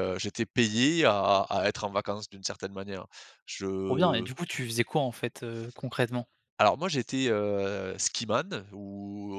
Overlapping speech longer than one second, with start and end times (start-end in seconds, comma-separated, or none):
none